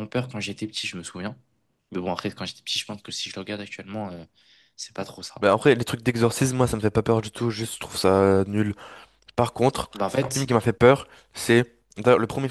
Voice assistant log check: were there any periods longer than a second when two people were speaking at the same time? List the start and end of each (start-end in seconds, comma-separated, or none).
none